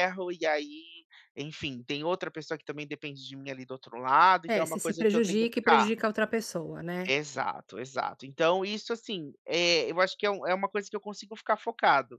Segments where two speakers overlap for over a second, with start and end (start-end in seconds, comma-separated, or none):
4.5-5.9